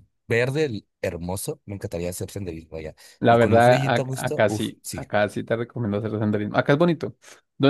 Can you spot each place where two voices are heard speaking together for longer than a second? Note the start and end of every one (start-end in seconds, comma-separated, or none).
3.2-5.0